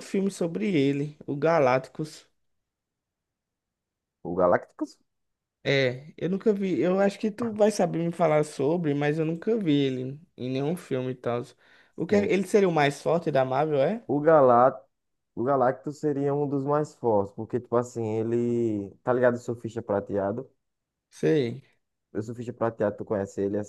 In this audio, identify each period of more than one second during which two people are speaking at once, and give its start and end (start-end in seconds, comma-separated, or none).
none